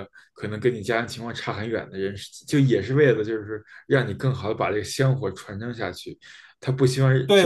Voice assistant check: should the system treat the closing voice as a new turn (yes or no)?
yes